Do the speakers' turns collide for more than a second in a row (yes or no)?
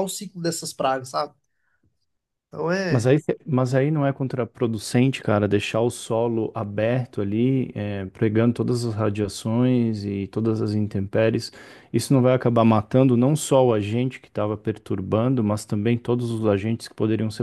no